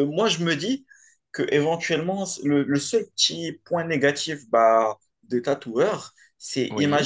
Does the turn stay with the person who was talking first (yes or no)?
yes